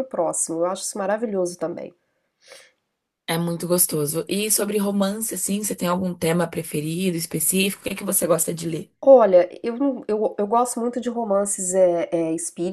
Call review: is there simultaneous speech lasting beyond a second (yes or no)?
no